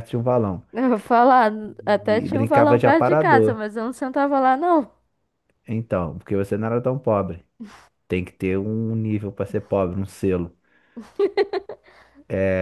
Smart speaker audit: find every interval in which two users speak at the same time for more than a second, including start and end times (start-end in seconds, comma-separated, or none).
2.0-3.6